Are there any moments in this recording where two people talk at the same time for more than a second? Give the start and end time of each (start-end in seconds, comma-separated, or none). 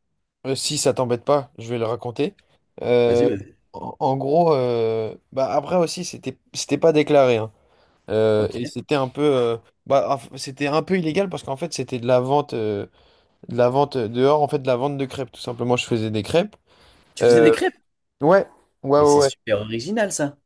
none